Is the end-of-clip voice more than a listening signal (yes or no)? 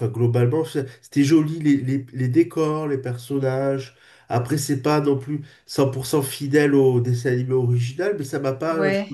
no